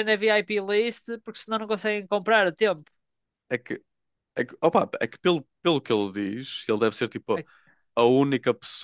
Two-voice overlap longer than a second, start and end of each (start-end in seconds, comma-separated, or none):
none